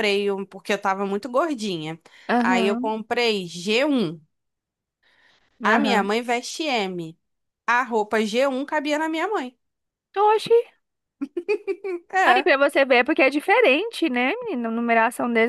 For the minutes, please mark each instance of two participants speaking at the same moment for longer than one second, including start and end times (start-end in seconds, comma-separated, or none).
none